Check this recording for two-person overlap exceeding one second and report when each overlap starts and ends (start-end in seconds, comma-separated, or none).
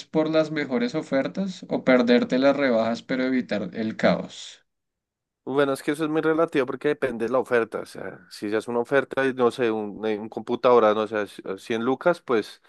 none